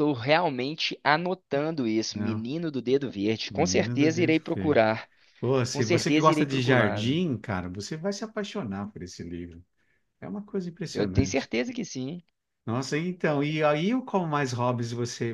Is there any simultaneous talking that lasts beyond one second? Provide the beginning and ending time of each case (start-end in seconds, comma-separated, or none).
3.5-4.8, 5.7-7.2